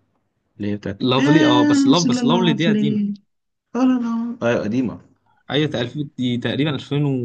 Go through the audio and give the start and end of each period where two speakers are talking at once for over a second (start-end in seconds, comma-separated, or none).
1.0-3.0